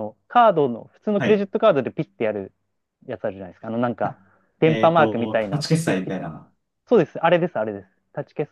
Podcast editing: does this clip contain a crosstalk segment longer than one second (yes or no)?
yes